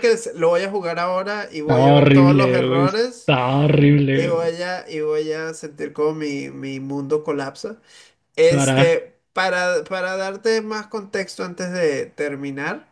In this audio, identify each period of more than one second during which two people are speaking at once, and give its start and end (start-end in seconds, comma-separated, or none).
1.6-3.3